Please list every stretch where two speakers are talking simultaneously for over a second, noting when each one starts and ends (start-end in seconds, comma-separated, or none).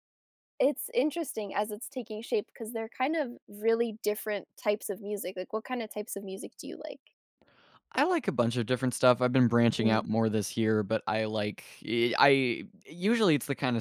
none